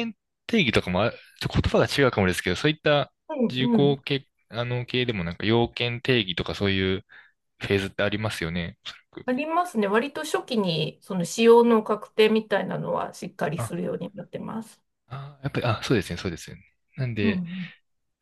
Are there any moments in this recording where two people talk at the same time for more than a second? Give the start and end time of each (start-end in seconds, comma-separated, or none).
none